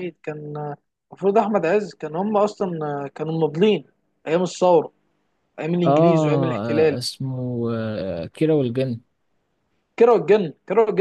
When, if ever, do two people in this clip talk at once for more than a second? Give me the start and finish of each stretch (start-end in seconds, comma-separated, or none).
none